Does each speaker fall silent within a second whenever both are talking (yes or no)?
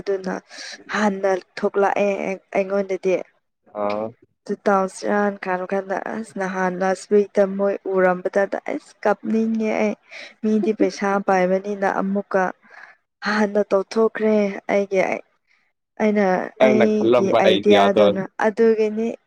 no